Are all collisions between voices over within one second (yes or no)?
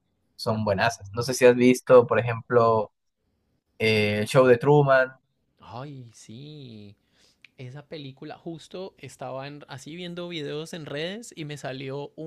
yes